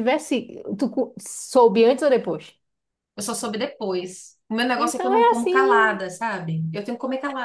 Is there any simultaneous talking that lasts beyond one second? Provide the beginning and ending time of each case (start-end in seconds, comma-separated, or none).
4.8-6.1